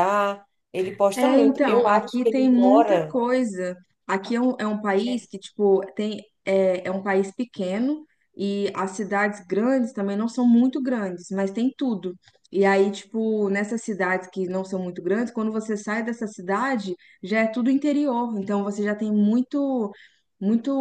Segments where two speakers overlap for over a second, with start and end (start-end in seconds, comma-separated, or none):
1.1-3.2